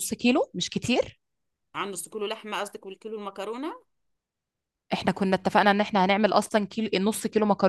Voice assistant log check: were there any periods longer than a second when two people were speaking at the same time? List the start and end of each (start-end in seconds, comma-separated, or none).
none